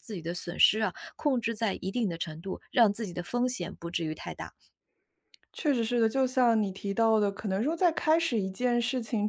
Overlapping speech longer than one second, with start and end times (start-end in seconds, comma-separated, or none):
none